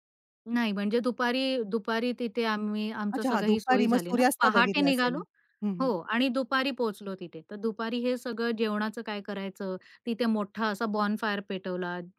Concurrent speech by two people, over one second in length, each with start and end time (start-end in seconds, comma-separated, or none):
3.2-5.2